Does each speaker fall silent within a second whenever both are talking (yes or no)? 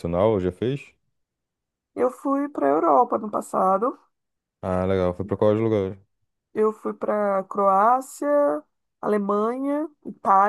yes